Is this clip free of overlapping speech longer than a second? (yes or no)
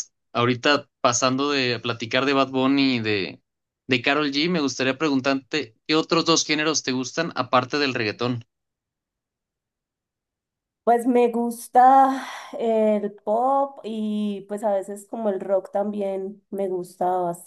yes